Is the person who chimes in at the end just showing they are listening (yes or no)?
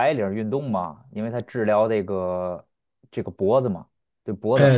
no